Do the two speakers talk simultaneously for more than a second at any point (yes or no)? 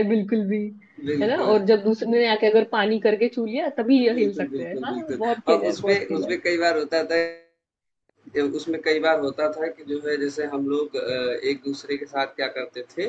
yes